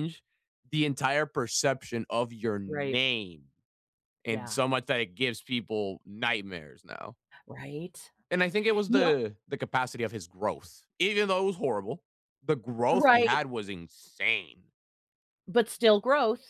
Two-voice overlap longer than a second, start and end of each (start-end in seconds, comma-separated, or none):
none